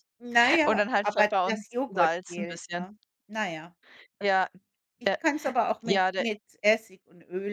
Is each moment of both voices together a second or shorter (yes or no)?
no